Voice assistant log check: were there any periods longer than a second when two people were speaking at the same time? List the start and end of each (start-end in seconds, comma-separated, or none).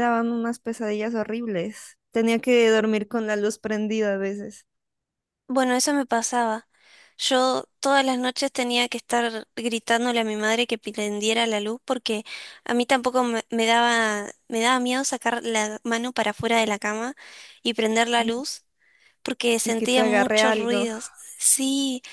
19.6-20.9